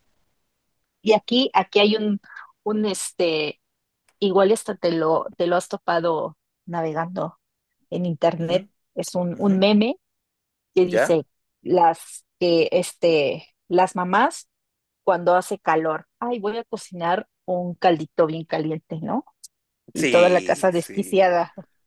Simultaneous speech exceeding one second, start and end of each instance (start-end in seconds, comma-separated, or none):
19.9-21.3